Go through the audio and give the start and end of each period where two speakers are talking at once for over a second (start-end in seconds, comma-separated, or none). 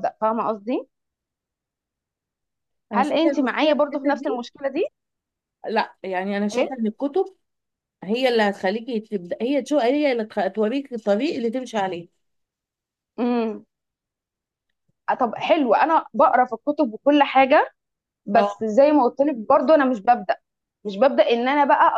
2.9-4.5